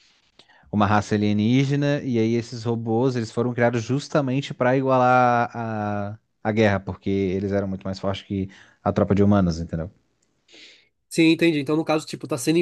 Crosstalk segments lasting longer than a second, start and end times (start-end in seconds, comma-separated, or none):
none